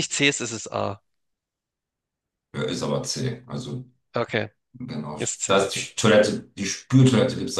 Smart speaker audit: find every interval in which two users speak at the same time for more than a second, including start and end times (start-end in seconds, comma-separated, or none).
none